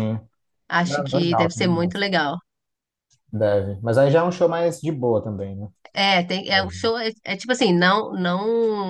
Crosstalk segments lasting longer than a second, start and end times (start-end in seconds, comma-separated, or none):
0.8-2.0